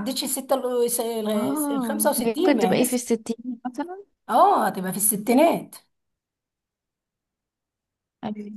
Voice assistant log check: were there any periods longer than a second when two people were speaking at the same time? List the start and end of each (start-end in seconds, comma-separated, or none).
1.3-3.0